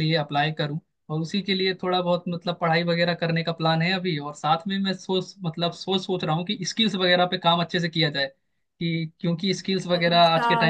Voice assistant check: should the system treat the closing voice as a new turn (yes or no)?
yes